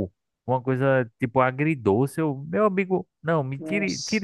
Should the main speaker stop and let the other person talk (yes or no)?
no